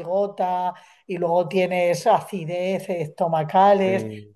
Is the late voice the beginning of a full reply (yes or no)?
no